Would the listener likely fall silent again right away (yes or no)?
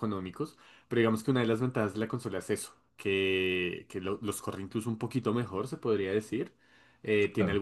yes